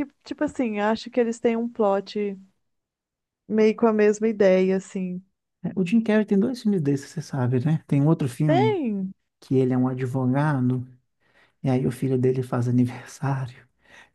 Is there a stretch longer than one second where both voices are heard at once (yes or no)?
no